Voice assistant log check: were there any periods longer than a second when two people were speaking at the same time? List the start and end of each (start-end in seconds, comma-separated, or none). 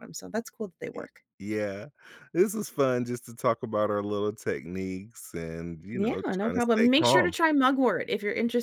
5.9-7.3